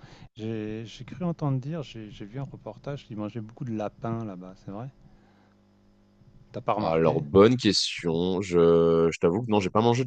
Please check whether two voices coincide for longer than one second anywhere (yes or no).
no